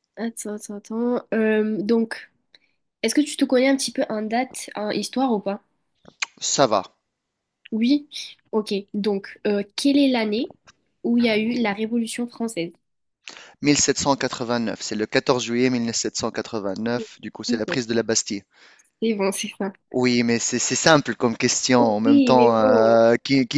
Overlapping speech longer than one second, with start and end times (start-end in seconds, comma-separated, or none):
21.8-23.0